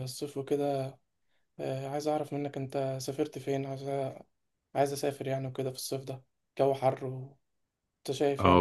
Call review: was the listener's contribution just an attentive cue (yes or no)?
no